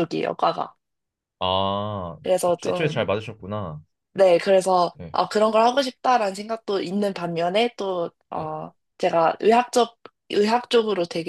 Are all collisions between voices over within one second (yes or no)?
yes